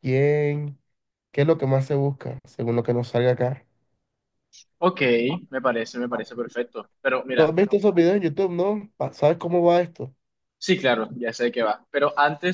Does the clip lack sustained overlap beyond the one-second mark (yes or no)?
yes